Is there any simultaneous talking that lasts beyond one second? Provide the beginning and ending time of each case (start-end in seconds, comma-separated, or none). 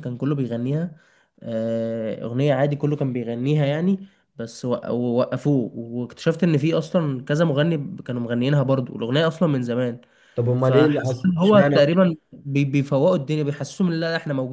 10.6-12.0